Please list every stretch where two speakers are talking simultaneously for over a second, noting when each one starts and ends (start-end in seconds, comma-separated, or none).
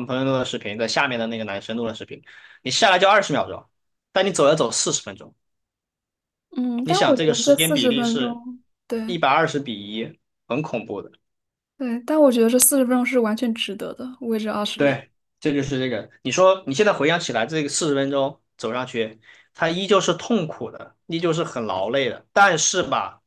6.8-8.4